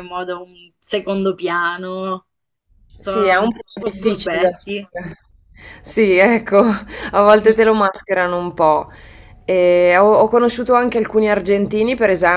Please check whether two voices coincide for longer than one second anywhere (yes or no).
yes